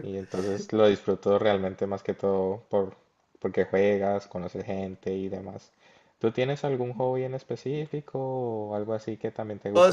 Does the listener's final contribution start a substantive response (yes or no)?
yes